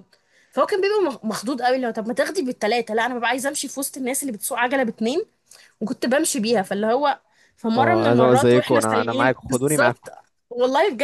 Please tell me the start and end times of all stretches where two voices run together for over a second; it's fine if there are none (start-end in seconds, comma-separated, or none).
7.8-10.1